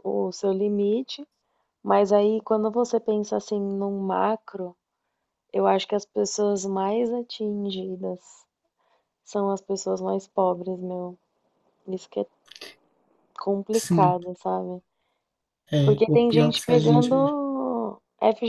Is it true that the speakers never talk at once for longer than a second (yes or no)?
no